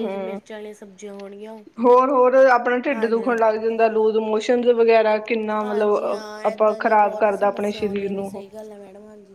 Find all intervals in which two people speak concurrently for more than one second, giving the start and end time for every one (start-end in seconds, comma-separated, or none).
5.6-8.4